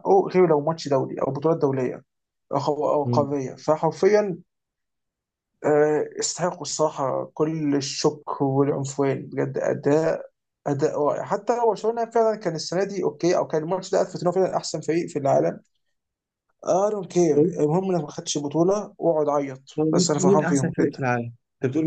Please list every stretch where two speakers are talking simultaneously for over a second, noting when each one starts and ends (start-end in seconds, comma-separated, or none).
19.8-21.1